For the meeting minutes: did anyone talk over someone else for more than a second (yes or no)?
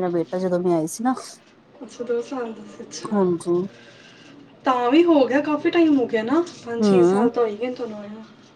no